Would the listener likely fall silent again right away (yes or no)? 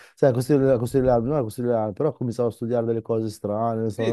no